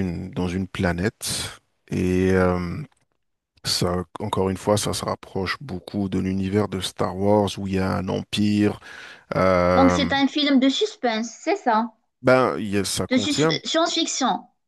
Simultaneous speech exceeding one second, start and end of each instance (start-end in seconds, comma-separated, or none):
none